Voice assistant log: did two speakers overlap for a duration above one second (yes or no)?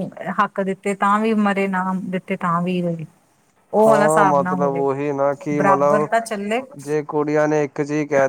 no